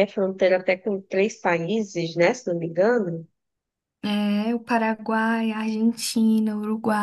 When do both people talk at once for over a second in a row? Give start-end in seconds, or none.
none